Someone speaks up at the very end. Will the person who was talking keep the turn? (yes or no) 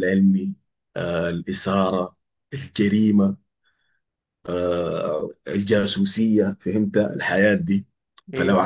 yes